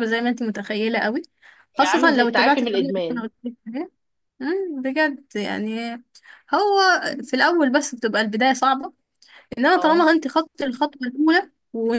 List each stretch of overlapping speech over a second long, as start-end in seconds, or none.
1.8-3.2